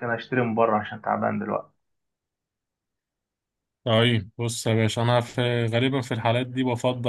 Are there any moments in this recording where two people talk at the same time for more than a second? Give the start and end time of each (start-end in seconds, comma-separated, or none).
none